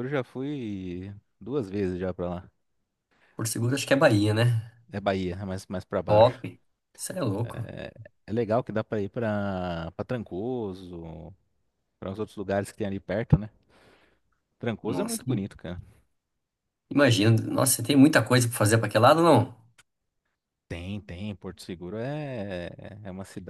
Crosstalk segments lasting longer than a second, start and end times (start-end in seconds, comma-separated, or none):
none